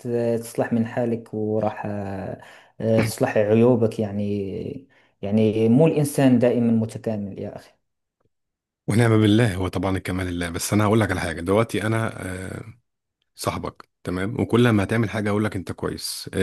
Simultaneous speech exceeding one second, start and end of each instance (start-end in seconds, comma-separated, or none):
none